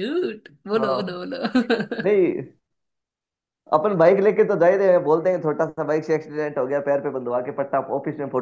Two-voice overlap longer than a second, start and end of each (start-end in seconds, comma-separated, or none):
none